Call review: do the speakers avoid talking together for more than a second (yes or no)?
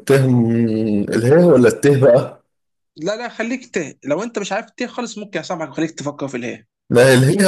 yes